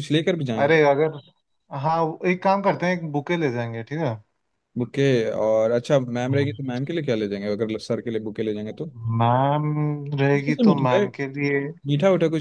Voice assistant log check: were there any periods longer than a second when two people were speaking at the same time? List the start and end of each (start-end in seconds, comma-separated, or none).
none